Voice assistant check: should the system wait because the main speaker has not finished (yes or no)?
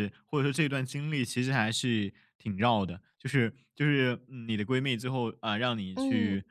yes